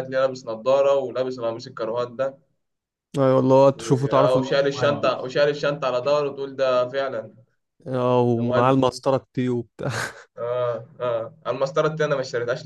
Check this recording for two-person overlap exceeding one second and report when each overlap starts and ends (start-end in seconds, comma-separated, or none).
3.7-5.3